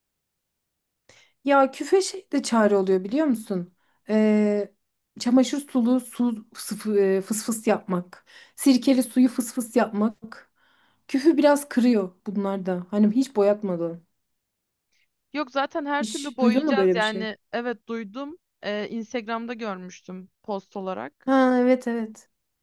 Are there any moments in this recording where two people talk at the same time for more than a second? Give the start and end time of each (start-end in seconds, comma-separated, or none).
16.0-17.3